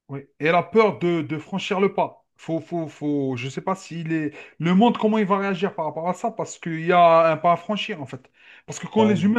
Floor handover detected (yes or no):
no